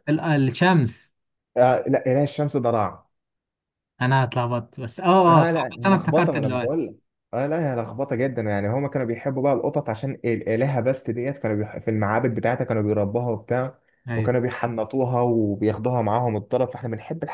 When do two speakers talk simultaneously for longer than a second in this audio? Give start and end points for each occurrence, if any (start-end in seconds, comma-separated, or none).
5.3-6.8